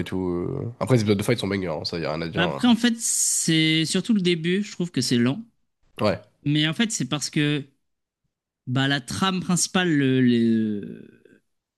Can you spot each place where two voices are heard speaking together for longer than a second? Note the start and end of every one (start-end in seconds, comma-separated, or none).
none